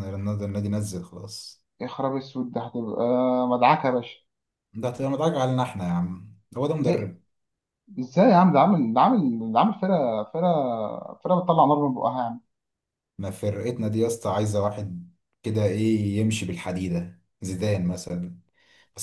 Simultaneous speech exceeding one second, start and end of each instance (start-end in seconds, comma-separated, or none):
none